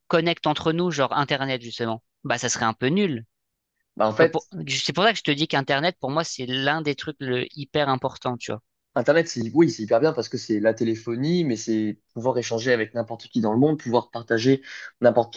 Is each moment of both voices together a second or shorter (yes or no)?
yes